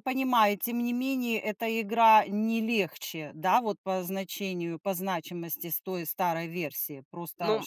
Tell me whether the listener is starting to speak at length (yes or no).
yes